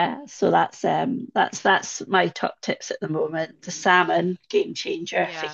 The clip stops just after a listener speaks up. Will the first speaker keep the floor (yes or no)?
yes